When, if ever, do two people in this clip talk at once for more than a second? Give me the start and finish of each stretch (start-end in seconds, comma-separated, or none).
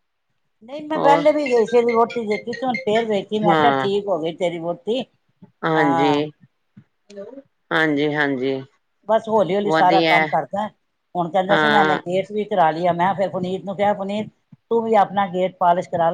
none